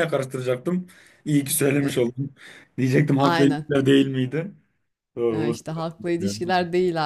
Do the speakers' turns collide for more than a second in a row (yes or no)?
yes